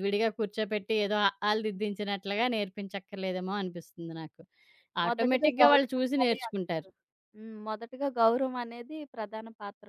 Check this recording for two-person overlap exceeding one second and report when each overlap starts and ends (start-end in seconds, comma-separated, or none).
5.1-6.9